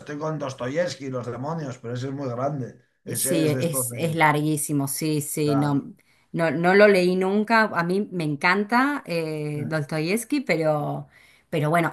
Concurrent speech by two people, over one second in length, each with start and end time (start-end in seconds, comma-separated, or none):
3.0-4.3